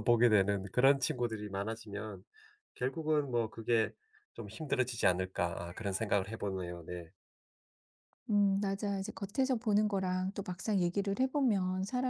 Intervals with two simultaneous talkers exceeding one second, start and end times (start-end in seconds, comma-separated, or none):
none